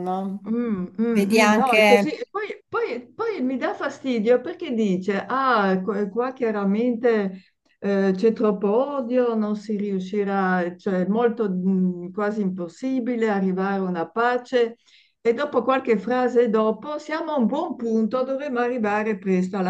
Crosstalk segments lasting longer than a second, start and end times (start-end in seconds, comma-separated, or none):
1.0-2.2